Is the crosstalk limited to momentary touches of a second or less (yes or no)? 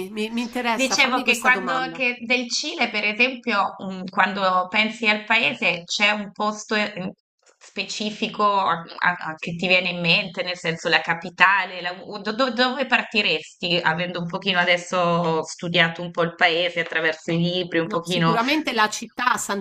no